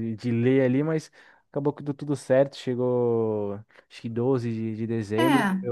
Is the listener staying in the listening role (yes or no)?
yes